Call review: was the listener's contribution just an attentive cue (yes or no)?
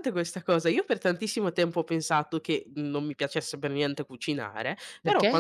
yes